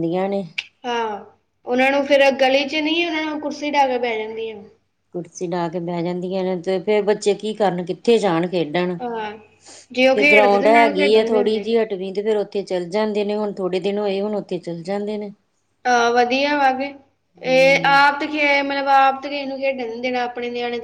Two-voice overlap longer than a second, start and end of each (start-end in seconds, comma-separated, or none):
10.1-11.7